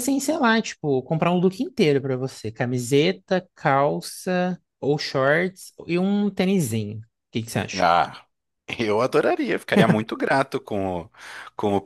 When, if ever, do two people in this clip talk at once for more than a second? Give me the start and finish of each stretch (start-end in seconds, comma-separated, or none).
none